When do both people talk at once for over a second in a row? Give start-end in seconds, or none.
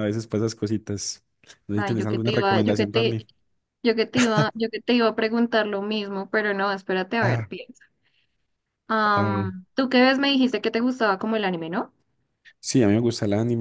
1.7-3.2